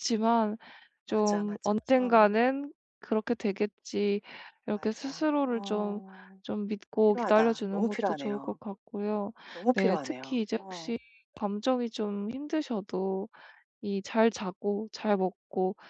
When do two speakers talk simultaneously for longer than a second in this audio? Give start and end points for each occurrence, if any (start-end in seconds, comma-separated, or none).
1.0-2.3, 4.7-6.0, 7.0-8.6, 9.7-11.0